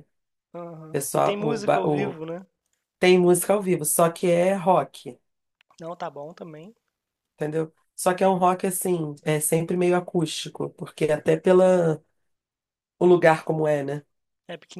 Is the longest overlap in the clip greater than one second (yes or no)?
yes